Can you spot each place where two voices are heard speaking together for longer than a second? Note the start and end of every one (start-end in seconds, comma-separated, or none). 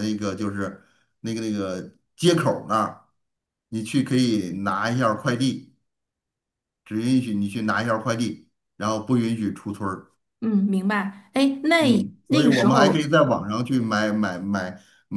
11.8-13.1